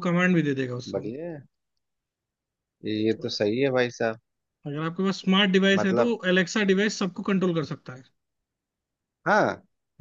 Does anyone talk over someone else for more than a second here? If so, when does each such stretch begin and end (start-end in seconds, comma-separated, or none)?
none